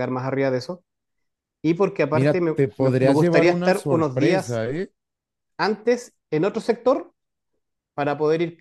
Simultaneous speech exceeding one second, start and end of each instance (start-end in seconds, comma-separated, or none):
2.1-4.6